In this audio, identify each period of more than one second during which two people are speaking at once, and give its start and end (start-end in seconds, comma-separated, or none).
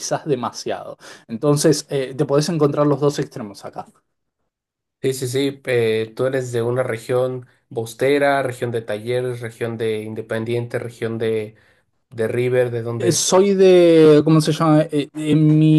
none